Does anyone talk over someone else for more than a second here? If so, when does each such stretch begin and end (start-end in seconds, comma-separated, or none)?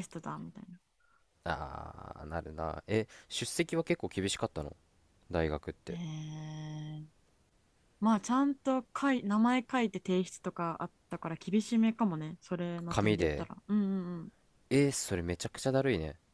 none